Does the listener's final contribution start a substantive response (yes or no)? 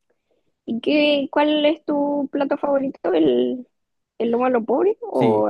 yes